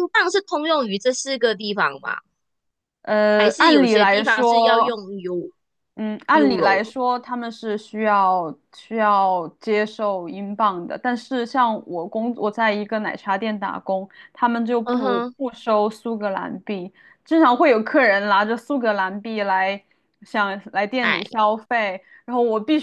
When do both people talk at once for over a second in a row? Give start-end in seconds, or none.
3.4-5.0